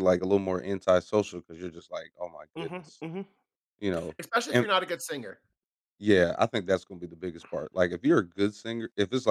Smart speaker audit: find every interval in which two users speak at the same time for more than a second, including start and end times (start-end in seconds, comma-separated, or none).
none